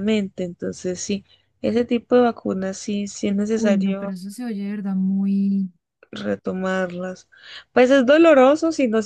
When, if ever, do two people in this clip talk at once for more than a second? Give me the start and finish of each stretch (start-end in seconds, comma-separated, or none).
none